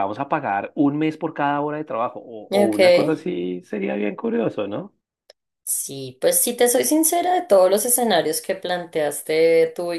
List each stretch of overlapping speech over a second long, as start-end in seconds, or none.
none